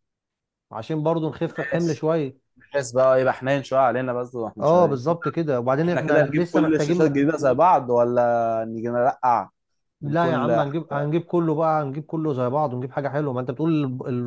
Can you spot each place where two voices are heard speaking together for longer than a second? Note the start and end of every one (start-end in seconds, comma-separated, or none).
5.8-7.2